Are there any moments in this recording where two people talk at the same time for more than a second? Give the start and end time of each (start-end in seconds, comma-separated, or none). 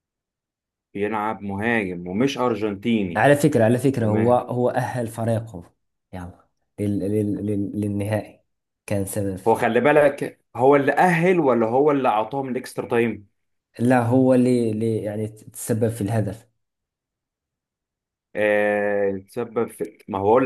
none